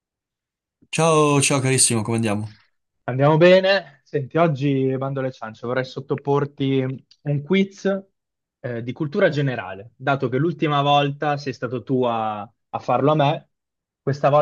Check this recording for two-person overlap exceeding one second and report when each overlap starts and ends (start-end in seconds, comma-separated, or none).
none